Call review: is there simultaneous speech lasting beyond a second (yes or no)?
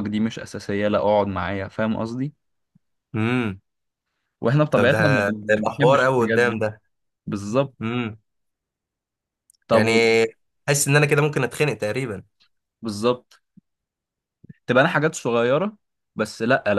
yes